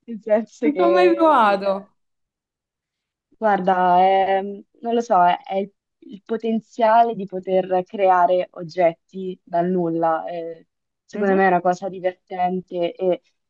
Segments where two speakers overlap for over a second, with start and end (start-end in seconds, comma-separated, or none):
0.6-1.9